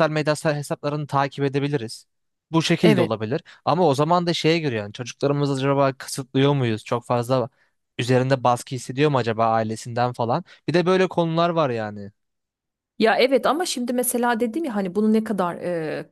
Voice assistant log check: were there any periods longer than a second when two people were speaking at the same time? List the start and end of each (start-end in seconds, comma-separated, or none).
none